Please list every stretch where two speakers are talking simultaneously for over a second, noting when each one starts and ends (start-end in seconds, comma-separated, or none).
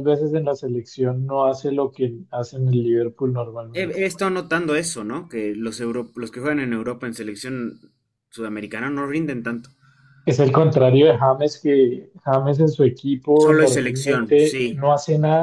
13.3-14.8